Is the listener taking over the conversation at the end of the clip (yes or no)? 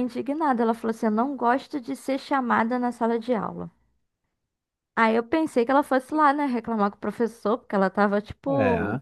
no